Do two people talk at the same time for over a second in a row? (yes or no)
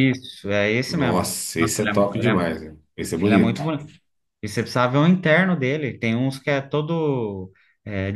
yes